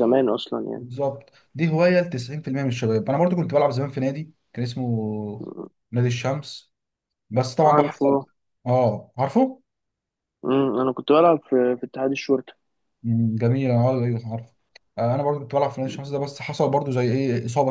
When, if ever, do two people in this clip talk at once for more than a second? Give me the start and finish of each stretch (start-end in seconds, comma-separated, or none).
none